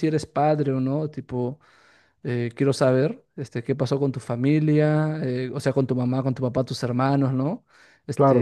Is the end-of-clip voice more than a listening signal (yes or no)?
no